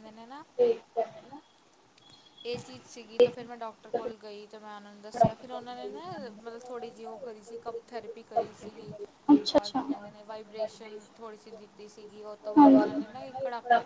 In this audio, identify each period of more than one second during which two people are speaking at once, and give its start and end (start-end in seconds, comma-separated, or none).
9.5-10.9